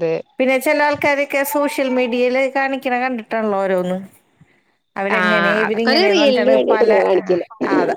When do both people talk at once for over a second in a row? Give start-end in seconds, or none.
5.2-7.4